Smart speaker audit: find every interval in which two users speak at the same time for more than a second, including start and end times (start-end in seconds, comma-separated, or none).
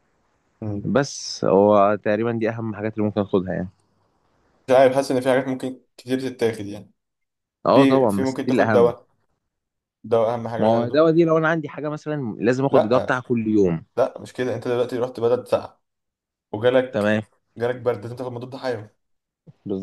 7.7-8.9